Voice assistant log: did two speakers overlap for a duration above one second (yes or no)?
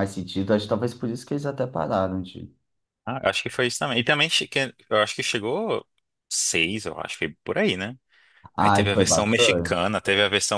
yes